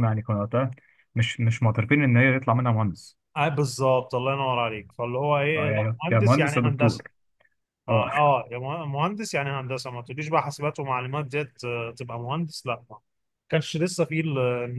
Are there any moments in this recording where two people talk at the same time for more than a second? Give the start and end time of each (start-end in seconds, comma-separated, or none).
5.5-7.0